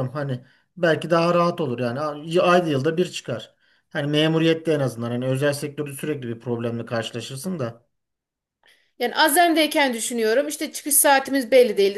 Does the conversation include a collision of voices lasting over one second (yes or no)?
no